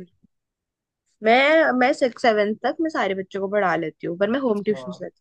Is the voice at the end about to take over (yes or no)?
yes